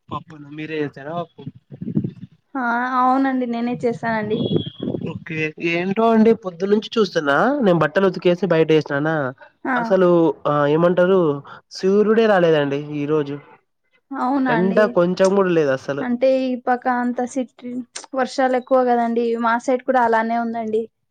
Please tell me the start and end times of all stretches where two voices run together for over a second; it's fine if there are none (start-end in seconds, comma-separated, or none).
none